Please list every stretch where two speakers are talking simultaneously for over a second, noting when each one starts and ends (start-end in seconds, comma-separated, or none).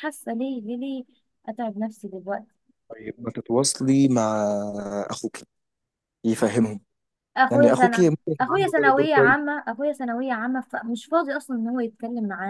7.5-9.4